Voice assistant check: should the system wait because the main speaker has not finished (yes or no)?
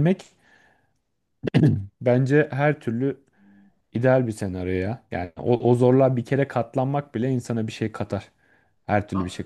yes